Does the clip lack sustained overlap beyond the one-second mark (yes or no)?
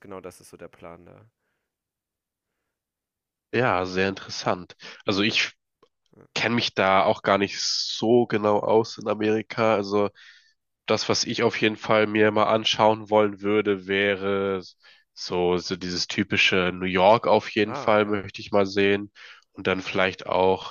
yes